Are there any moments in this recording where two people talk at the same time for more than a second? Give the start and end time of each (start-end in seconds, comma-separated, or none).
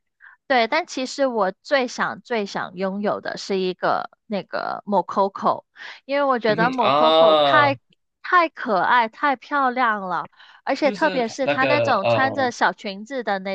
6.5-7.7, 10.8-12.5